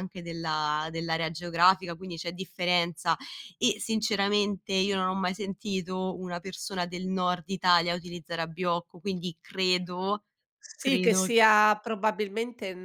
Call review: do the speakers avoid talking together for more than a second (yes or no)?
yes